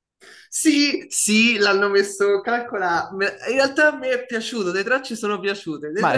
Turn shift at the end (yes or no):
yes